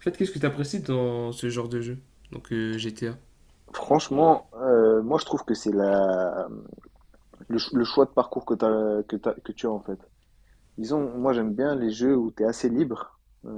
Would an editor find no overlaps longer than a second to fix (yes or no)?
yes